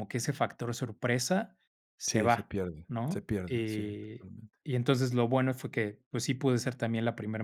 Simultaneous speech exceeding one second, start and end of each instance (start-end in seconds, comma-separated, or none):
2.1-4.3